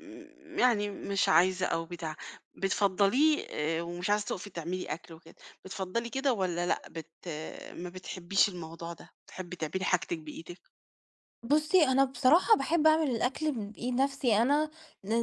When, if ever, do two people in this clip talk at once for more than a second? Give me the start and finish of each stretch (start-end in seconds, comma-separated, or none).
none